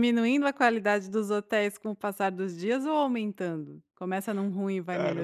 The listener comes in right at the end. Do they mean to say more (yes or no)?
yes